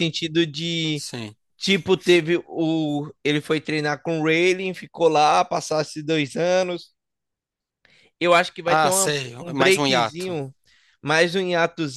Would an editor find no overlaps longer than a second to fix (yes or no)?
no